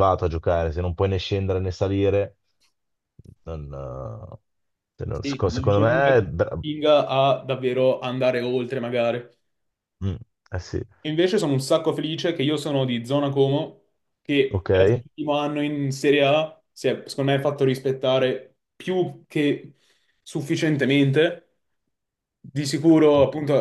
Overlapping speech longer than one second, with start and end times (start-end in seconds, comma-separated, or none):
5.1-6.6